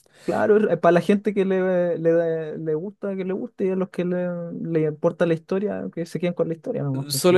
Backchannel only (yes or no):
no